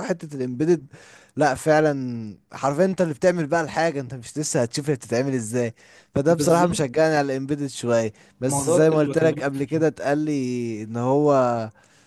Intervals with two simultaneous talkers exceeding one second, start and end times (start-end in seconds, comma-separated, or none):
8.5-9.8